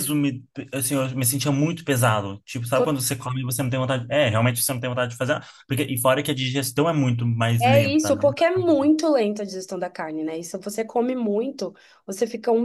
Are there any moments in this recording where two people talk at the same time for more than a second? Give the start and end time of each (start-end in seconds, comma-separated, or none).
7.6-8.9